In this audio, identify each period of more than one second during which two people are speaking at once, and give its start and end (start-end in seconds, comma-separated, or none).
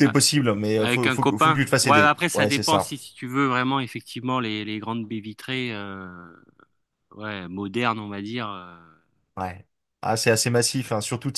0.8-2.9